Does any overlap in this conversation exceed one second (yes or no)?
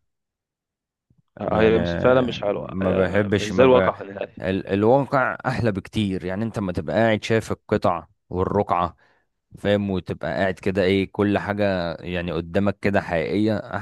yes